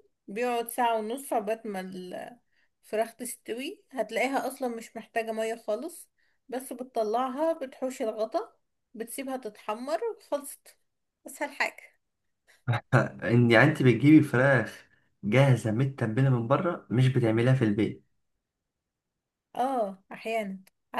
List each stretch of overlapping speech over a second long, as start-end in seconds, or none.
none